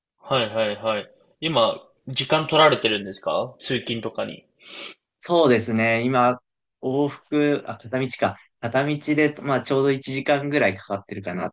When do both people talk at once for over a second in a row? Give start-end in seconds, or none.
none